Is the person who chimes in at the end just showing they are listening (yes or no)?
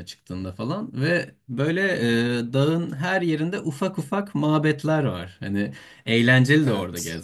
yes